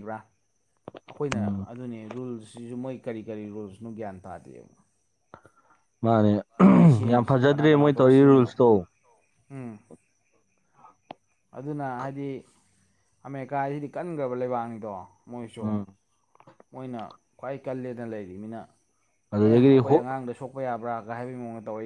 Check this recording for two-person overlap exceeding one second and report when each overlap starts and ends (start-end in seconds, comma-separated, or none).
7.1-8.5